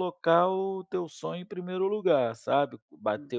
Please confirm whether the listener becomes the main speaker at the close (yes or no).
no